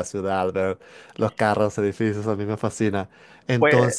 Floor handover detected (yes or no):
no